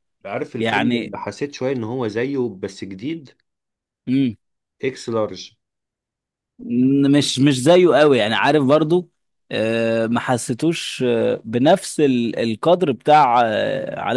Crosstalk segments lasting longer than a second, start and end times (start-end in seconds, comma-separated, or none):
none